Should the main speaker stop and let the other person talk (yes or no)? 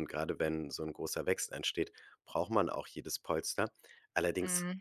no